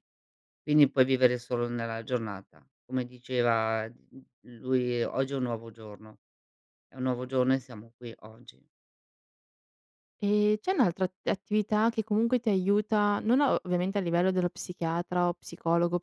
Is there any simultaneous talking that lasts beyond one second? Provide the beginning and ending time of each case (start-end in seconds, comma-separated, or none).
none